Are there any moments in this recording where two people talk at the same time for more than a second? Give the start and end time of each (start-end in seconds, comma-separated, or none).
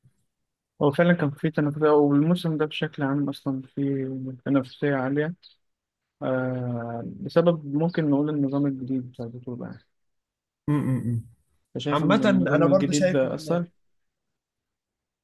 11.9-13.2